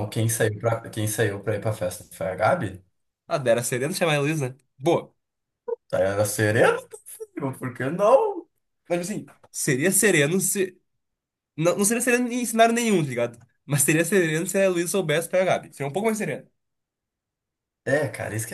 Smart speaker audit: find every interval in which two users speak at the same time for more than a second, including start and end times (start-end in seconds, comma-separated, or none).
none